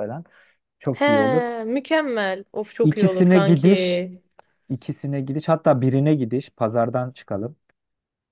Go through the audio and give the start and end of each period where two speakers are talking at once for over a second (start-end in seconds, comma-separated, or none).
2.8-4.0